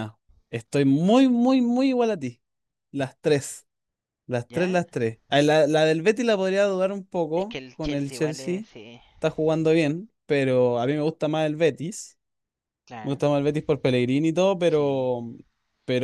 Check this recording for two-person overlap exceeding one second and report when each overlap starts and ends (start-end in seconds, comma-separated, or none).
7.4-8.6